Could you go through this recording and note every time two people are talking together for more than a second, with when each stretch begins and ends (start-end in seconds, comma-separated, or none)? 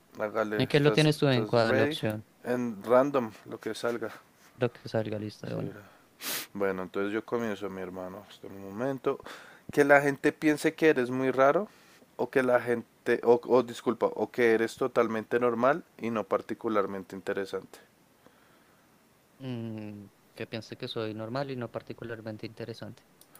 0.6-2.0